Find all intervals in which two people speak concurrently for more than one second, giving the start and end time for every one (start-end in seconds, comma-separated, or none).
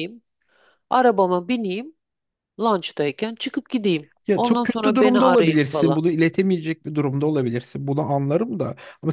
4.3-6.0